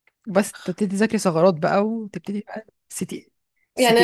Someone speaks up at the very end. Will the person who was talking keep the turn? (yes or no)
no